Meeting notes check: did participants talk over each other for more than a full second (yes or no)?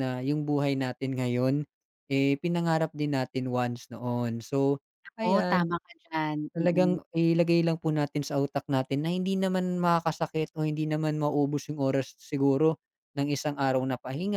no